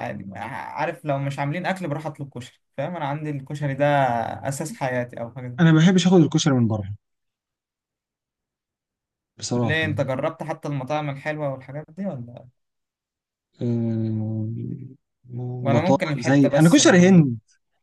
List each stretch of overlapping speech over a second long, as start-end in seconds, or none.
15.7-17.2